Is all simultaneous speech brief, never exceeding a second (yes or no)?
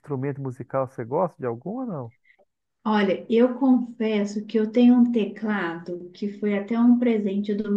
yes